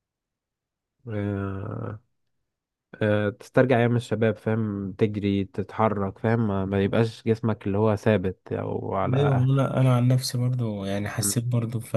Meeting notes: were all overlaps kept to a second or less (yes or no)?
yes